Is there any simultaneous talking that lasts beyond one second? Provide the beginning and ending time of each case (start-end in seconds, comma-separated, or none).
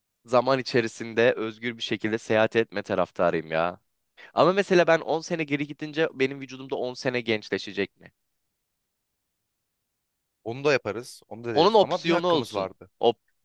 11.5-12.9